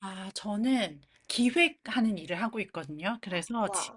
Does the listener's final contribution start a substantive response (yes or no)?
no